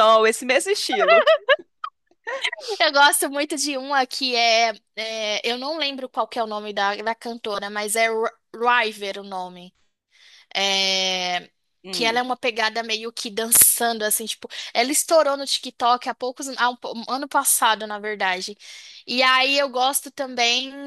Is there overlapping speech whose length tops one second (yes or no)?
no